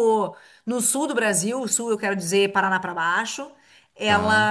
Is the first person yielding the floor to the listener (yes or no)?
no